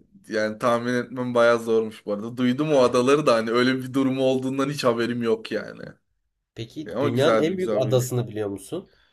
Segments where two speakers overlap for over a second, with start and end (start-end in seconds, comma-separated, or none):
6.8-8.1